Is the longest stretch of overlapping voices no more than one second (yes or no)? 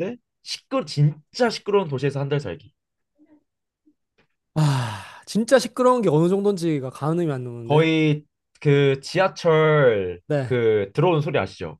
yes